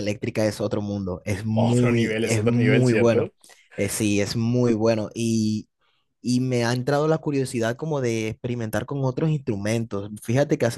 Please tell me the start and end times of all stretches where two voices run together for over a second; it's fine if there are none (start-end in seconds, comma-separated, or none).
1.5-3.3